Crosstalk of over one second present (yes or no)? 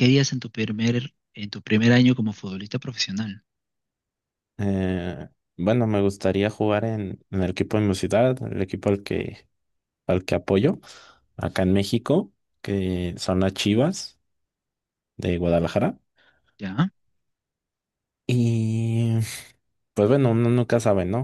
no